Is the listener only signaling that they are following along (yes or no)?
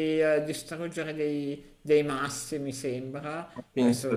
yes